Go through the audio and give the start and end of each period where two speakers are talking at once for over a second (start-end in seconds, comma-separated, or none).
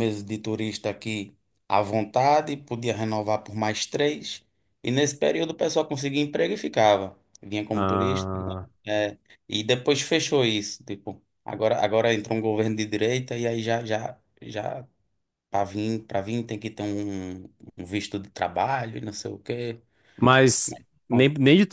none